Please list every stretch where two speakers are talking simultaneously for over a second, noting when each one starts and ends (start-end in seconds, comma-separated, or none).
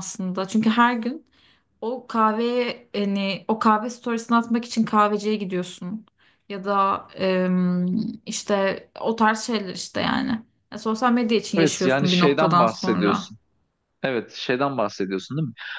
11.6-13.3